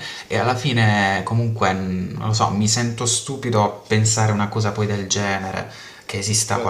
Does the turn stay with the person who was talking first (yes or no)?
no